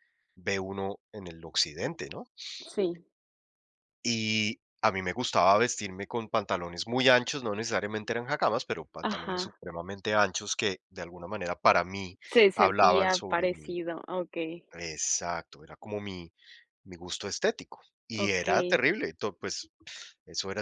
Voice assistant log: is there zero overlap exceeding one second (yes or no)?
no